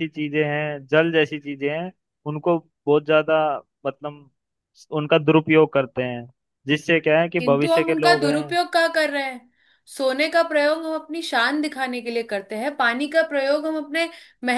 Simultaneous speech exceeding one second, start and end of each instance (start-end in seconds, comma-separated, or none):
7.4-8.6